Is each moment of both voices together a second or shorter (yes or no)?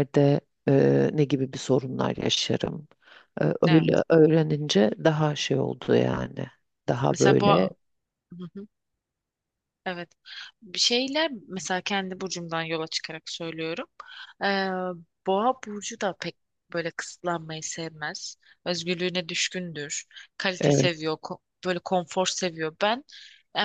yes